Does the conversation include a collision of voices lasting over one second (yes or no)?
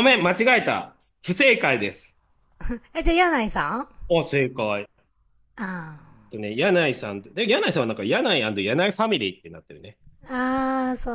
no